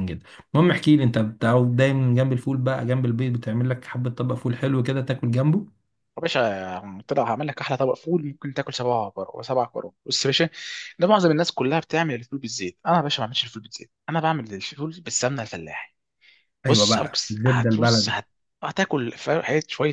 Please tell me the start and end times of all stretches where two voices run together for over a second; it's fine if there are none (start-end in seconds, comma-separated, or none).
16.7-18.1